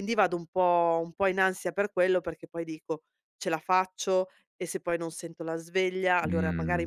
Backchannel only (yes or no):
yes